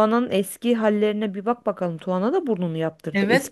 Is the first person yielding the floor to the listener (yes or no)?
yes